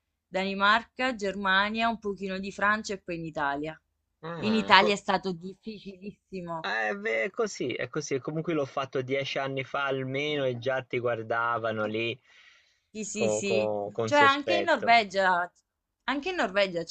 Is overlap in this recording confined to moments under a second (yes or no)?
no